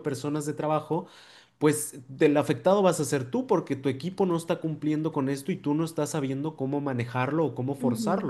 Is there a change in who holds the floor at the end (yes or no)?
yes